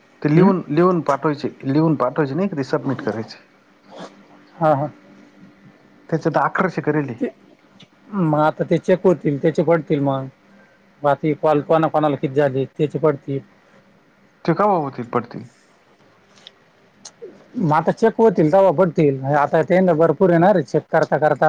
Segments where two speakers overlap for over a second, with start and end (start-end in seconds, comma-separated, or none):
none